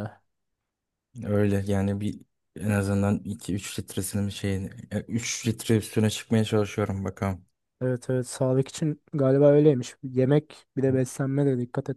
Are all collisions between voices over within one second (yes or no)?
yes